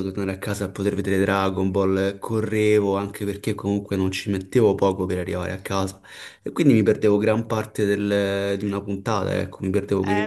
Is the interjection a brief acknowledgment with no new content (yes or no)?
no